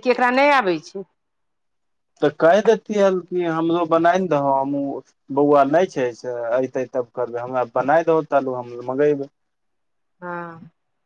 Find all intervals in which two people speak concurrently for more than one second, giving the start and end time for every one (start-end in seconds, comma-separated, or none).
none